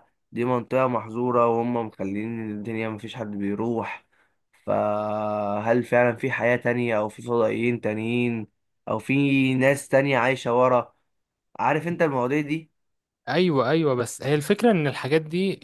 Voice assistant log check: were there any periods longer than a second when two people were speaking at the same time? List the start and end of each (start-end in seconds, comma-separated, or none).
none